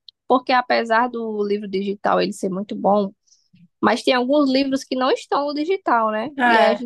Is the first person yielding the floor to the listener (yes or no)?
no